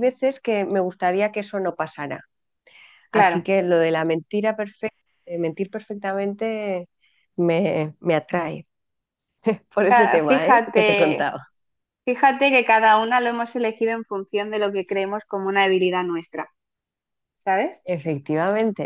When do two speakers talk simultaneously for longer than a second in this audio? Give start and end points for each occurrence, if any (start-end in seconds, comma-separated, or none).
9.9-11.4